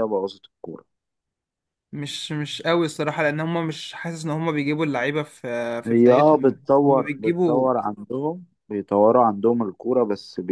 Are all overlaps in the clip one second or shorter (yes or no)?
no